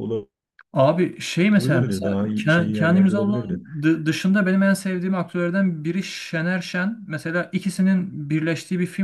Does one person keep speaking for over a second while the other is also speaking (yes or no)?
yes